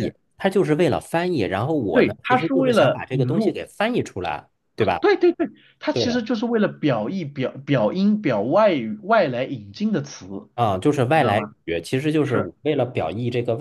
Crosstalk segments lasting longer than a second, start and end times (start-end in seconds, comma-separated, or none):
1.9-3.6